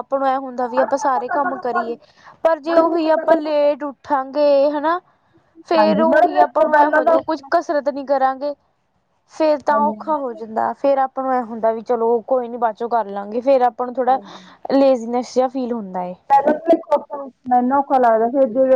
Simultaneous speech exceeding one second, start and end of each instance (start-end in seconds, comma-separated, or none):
5.8-7.3